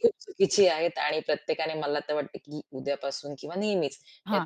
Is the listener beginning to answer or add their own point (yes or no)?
no